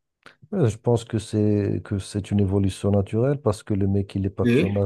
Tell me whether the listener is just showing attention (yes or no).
yes